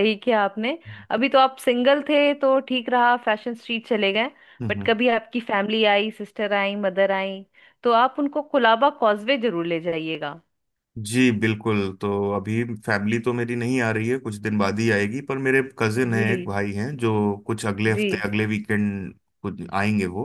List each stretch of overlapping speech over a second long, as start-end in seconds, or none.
none